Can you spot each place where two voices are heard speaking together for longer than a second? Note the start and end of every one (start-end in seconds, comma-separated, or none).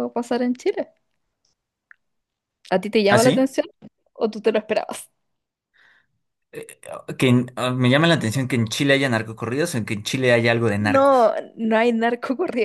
none